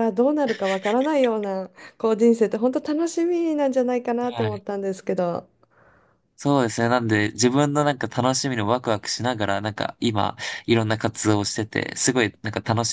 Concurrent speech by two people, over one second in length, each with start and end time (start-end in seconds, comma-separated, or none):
none